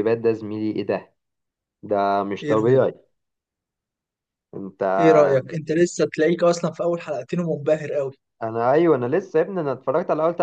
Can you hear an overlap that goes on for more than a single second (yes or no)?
no